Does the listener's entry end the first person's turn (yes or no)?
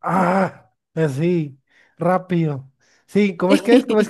no